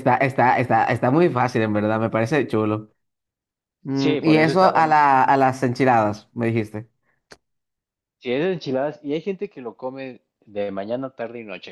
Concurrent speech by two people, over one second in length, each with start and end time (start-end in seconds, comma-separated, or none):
3.9-5.2